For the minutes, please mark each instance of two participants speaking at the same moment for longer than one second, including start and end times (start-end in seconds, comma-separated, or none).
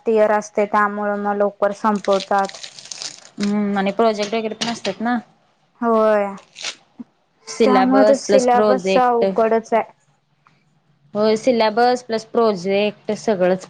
7.6-9.2